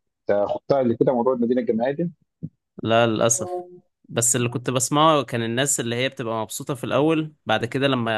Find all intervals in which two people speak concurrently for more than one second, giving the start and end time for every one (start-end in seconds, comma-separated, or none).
none